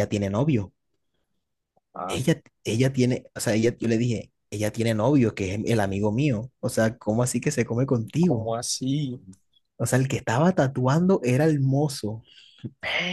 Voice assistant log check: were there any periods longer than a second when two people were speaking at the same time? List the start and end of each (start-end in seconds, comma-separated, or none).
none